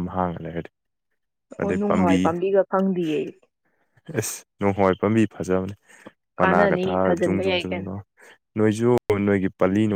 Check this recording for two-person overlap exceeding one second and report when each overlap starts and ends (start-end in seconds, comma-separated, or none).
6.4-7.9